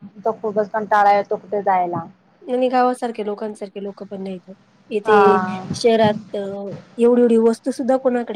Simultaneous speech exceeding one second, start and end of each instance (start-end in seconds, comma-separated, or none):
none